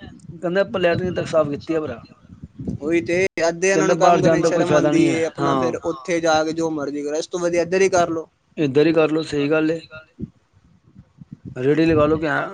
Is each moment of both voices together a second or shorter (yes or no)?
no